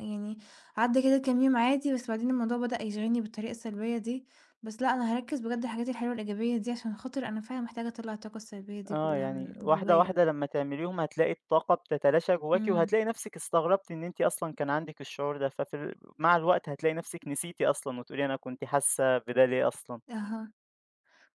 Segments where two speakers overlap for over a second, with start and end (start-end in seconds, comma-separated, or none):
8.9-10.2